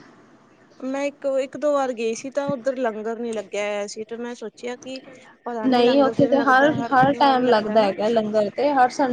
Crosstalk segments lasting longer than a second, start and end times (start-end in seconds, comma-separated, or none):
5.7-7.9